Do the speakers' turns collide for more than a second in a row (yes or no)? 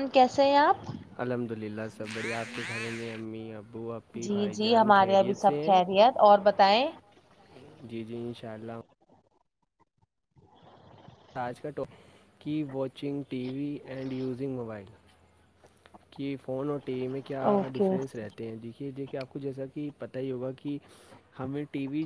yes